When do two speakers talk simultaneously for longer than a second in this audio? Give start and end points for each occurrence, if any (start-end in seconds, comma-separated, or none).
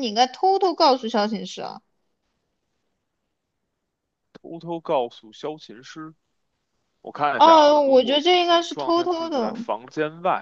7.3-9.6